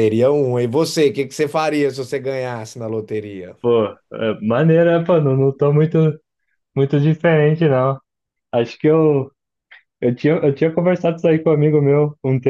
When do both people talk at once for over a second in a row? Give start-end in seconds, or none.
none